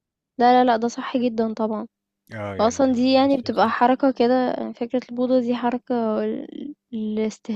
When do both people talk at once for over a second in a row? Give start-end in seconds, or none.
2.6-3.9